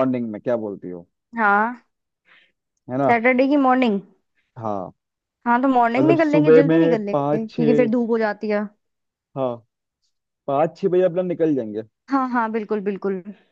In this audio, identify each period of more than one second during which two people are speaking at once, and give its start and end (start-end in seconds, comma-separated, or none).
6.0-7.9